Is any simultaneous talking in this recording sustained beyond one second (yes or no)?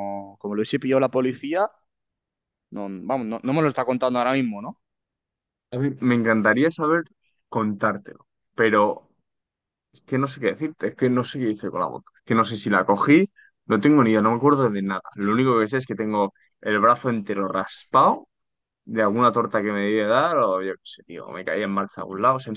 no